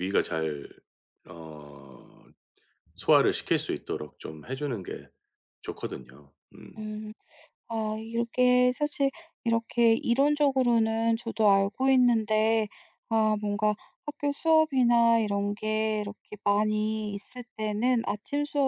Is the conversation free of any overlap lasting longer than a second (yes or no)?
yes